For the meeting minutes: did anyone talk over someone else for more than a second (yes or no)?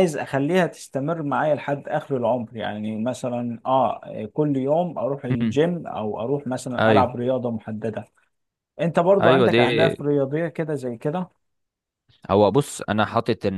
no